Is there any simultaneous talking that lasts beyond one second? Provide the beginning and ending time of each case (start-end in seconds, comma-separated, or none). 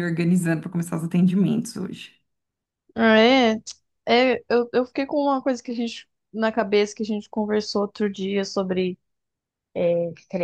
none